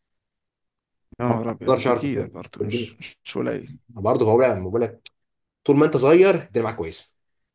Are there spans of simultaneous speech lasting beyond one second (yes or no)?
yes